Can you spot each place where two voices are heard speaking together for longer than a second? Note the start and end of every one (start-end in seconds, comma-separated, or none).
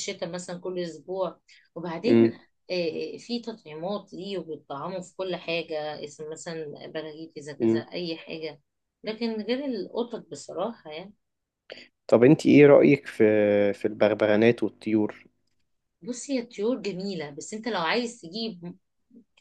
none